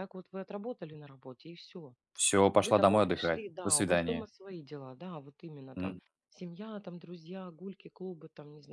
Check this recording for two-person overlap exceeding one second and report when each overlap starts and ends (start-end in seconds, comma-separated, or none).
2.5-4.3